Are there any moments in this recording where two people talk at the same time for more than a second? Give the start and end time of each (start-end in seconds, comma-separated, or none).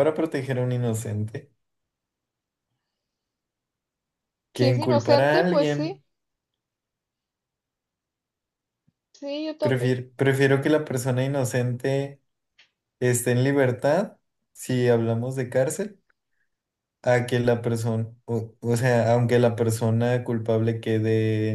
4.5-6.0